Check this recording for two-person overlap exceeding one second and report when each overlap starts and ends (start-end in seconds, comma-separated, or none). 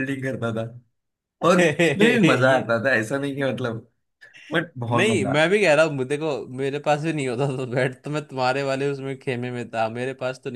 1.4-2.7